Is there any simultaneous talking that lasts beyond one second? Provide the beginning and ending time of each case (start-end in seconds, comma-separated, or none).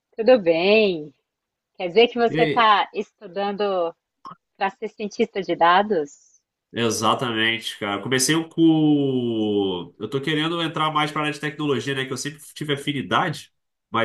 none